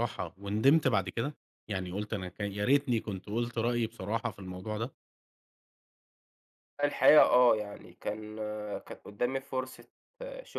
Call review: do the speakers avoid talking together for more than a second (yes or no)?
yes